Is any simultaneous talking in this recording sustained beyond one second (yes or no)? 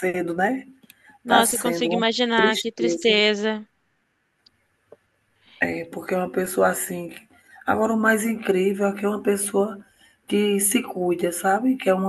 yes